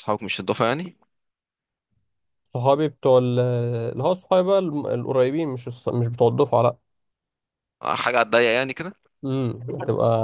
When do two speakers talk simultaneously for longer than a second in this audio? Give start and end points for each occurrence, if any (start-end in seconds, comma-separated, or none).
none